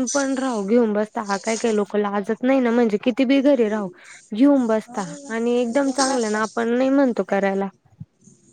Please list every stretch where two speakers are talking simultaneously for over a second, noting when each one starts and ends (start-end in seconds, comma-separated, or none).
4.7-6.5